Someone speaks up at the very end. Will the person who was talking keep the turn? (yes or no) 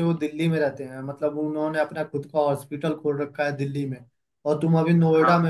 yes